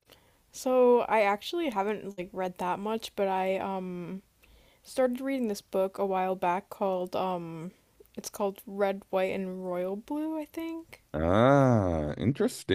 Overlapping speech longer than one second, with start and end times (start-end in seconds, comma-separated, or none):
none